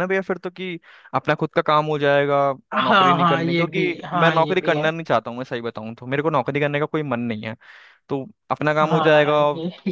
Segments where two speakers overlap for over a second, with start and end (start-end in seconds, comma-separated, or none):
2.8-4.9